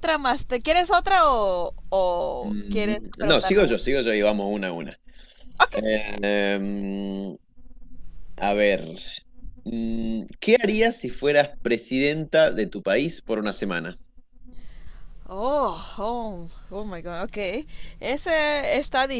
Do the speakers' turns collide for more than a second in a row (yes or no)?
yes